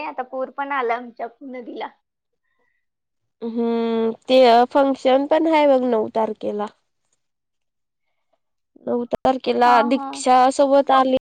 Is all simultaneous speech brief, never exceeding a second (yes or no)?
yes